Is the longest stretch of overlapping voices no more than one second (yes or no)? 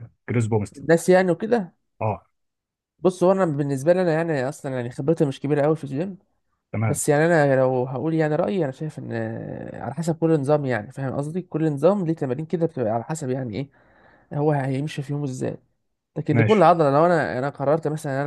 yes